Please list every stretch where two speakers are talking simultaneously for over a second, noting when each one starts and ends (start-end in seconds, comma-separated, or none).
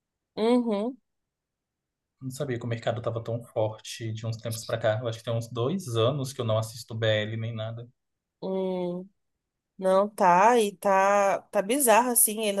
none